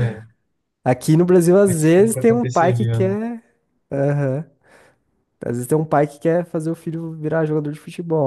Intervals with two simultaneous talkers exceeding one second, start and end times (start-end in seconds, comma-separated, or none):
1.6-3.1